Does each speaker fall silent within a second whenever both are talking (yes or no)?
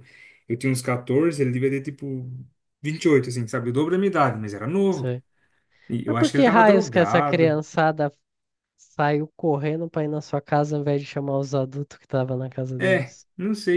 no